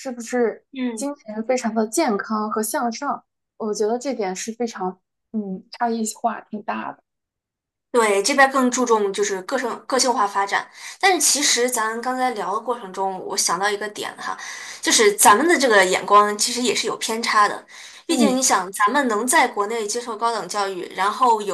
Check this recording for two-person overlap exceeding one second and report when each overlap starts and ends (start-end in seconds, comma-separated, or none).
none